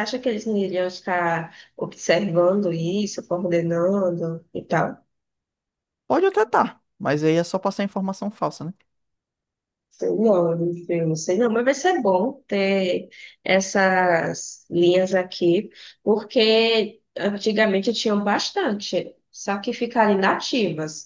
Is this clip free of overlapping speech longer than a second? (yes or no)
yes